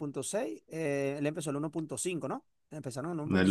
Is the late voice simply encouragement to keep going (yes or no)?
no